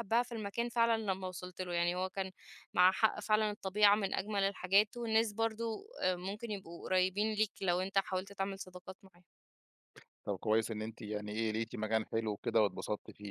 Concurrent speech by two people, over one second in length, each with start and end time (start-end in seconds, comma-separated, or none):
none